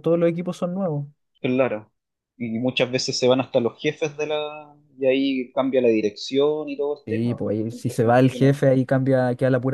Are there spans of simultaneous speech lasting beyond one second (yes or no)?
yes